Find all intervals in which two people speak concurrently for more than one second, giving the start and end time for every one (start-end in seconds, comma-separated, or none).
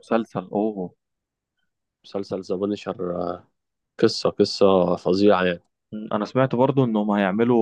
none